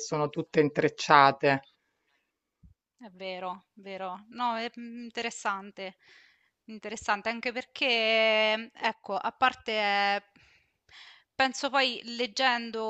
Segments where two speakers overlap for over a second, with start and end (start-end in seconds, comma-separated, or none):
none